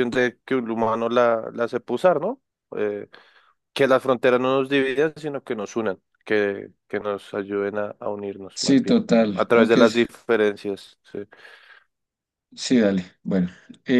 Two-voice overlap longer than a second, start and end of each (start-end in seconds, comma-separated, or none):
8.6-10.1